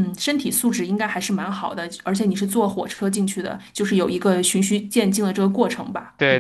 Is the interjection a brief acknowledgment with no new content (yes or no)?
no